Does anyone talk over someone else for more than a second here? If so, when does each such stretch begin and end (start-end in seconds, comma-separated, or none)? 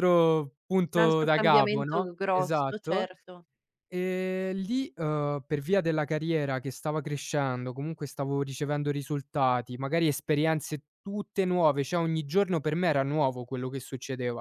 0.9-3.1